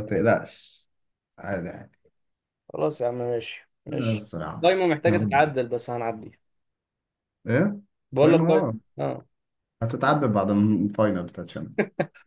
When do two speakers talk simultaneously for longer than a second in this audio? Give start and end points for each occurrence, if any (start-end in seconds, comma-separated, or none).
3.9-5.5